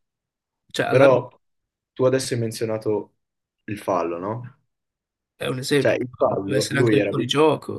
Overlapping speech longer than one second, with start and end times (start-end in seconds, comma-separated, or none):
5.8-7.3